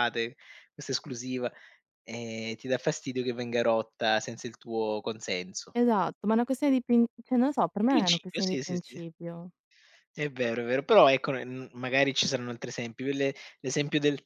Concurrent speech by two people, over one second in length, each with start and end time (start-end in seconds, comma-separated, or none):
7.8-9.0